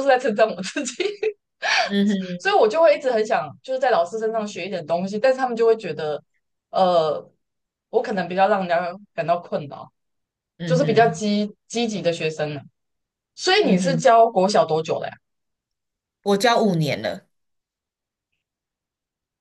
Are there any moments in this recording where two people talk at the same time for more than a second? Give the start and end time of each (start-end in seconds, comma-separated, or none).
none